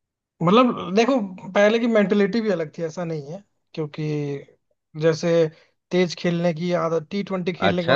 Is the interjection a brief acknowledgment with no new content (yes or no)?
no